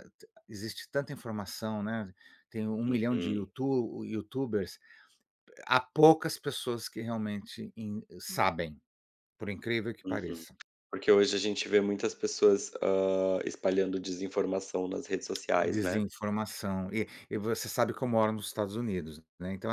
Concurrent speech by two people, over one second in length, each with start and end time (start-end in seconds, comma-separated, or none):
none